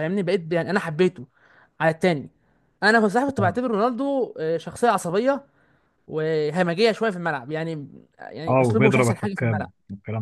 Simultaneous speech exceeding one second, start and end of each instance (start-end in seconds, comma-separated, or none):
8.5-9.7